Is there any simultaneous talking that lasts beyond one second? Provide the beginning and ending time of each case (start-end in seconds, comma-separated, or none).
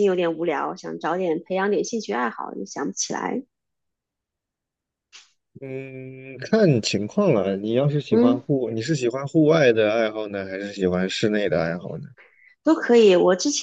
none